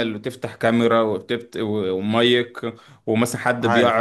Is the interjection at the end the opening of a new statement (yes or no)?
no